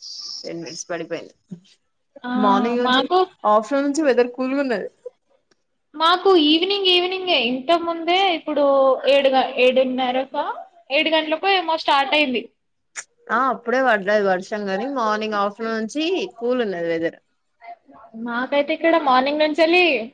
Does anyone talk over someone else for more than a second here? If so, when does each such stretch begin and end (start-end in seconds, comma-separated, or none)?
none